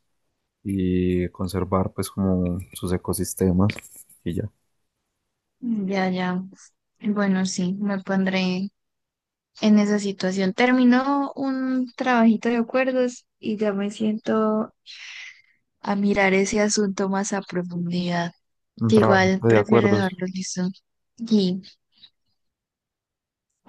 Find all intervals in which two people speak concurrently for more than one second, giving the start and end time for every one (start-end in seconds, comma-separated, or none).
18.9-20.2